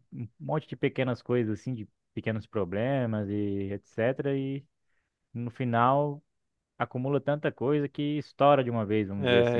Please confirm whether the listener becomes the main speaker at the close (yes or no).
yes